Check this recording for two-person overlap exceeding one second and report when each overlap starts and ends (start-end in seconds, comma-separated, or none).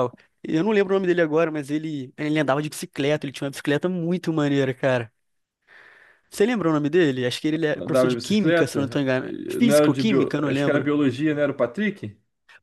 7.8-10.9